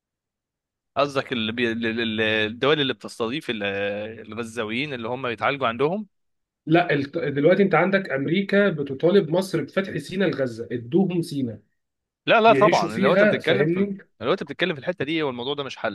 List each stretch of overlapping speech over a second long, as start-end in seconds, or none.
12.5-14.0